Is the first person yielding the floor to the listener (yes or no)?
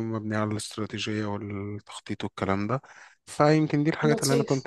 no